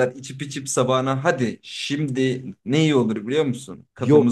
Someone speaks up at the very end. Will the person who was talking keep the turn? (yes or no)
no